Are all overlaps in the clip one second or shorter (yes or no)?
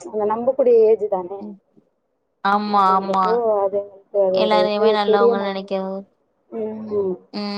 yes